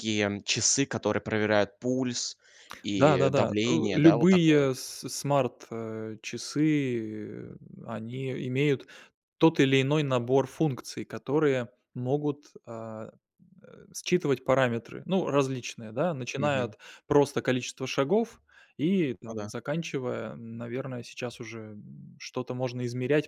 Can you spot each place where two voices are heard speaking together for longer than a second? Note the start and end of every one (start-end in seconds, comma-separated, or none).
3.0-4.7